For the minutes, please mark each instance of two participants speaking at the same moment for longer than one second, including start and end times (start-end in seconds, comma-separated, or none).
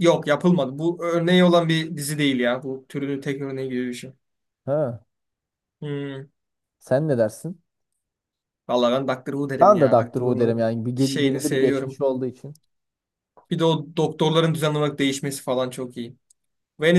9.6-12.0